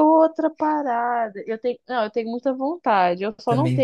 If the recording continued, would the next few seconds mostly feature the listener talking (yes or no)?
no